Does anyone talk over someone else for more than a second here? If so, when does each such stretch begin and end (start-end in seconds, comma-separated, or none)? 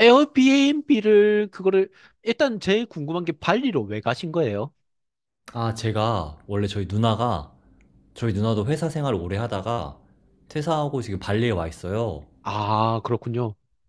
none